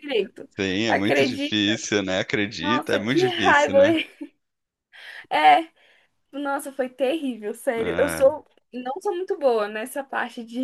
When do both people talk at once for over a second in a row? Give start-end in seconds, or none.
2.6-3.8